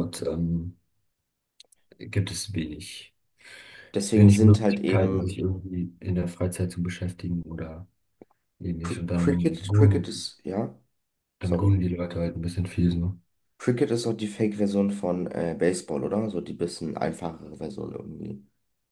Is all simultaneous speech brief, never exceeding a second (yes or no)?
no